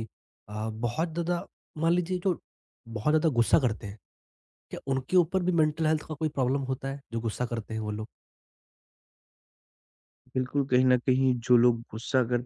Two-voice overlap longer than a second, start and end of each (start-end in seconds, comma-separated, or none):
none